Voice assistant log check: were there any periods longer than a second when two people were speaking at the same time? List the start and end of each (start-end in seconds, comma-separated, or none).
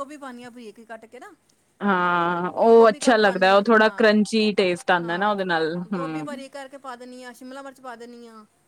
2.8-4.1